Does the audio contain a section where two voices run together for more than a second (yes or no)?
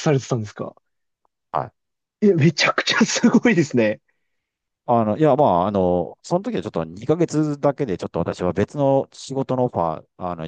no